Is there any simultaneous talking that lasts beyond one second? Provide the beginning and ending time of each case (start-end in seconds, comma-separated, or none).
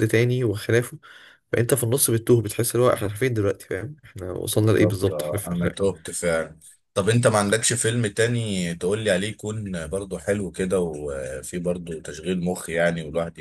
4.5-5.8